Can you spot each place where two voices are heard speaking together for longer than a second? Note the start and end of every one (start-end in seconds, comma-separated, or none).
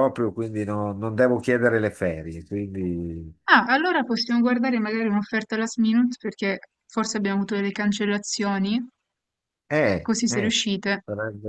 none